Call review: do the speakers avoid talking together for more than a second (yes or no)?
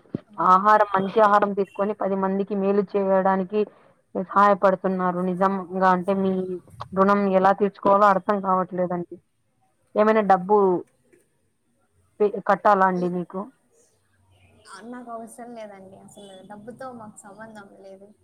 yes